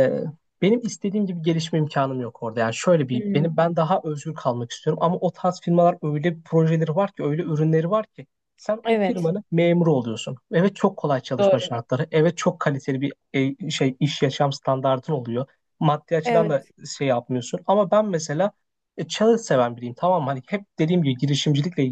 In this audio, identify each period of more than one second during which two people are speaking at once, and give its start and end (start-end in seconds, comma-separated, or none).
none